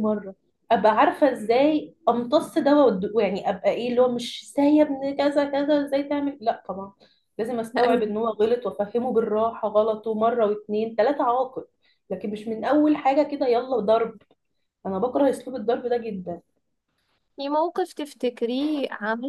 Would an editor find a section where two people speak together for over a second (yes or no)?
no